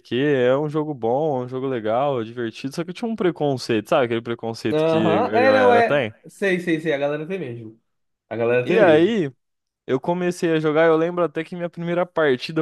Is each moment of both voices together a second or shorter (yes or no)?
no